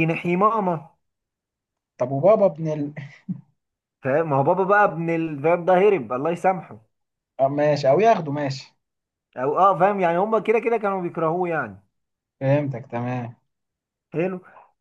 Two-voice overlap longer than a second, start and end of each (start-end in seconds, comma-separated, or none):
none